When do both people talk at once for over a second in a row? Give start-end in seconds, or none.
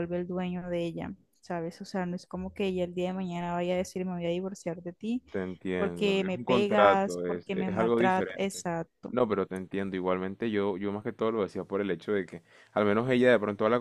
5.7-8.6